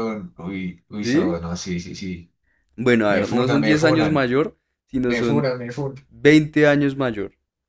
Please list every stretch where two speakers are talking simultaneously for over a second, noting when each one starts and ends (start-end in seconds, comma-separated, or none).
3.1-4.3